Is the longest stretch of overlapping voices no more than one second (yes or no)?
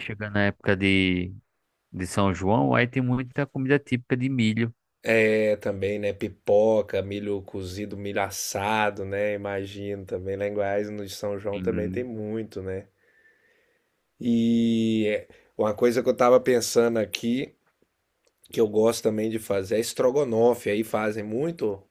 yes